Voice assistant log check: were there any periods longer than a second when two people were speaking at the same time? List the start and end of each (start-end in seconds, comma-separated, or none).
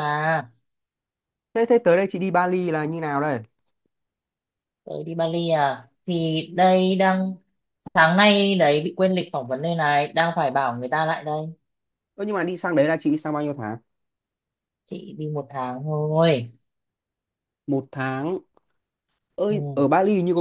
none